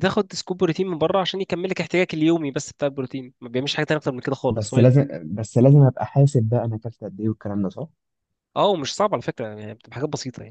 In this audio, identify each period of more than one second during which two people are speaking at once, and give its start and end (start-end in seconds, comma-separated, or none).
none